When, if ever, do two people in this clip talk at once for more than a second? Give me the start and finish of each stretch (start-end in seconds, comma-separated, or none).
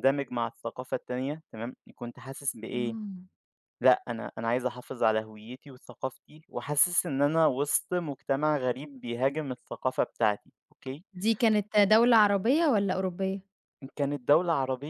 none